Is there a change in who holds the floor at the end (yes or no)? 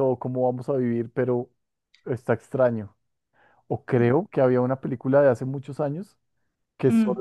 no